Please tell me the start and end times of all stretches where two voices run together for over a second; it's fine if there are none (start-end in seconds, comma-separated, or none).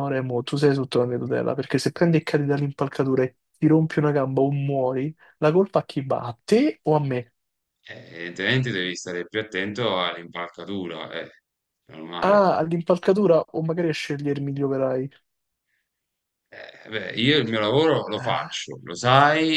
none